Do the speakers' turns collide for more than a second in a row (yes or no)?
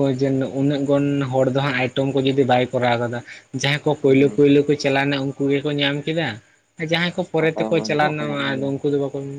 yes